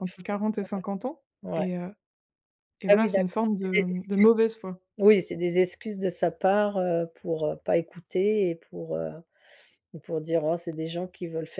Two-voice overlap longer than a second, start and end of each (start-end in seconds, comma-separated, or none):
2.9-4.2